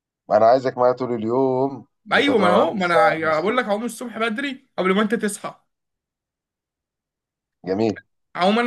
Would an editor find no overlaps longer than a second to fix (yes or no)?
no